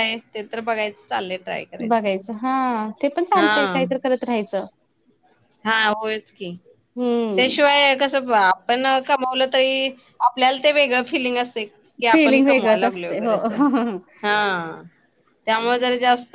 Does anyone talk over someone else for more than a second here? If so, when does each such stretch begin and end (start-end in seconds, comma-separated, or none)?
12.1-13.4